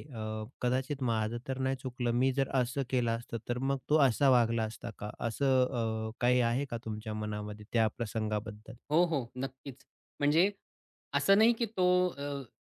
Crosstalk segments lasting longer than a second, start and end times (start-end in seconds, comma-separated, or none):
none